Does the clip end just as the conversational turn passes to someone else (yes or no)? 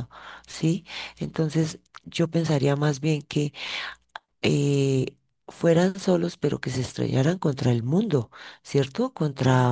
no